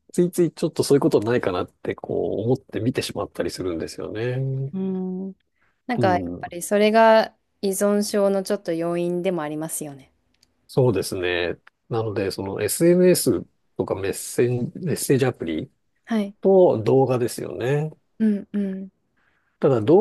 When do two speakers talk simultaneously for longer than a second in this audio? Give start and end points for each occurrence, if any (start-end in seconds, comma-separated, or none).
none